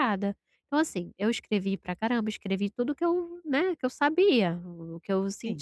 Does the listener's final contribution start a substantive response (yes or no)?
no